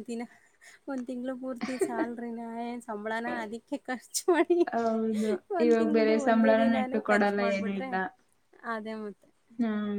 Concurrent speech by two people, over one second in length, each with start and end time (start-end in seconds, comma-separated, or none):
5.7-7.9